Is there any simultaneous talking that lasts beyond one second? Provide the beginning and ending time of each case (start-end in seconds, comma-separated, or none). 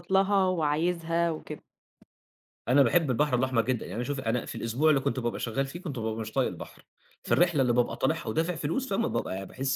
none